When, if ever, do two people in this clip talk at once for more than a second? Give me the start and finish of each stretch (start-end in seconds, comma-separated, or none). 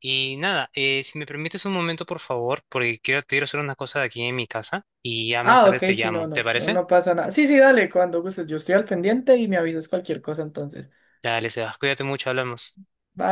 5.4-6.8